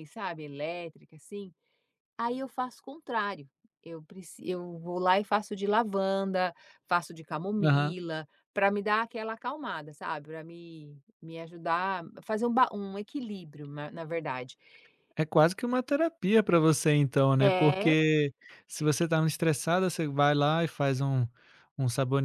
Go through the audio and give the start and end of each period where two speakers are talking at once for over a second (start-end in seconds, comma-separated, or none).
none